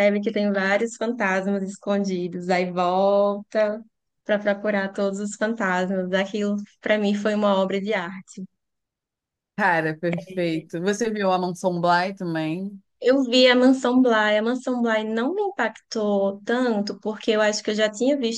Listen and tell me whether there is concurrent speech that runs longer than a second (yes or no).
no